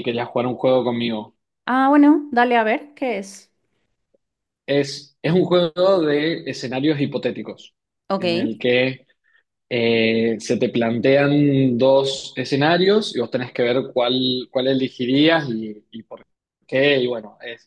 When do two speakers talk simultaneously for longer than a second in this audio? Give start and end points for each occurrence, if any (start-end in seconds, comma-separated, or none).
none